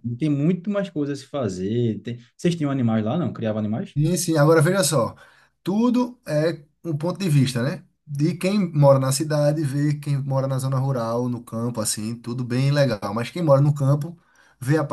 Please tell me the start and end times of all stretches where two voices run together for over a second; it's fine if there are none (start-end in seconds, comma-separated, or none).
none